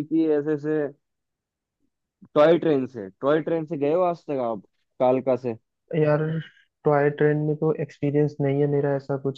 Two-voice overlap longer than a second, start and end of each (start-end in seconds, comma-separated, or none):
none